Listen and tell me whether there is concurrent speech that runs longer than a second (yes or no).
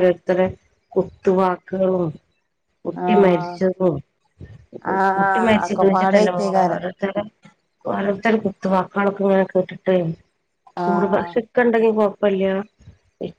yes